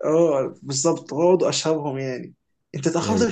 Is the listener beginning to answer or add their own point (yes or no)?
no